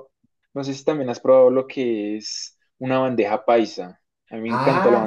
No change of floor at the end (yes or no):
no